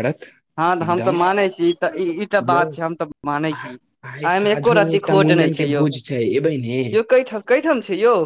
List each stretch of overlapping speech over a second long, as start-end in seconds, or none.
4.1-5.8